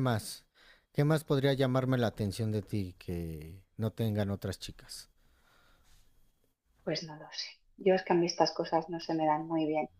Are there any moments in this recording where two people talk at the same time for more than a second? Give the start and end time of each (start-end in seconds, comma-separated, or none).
none